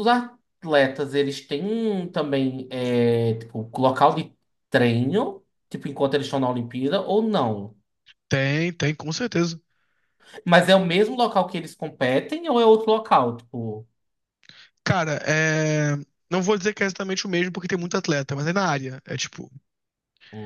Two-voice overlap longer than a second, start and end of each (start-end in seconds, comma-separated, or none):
none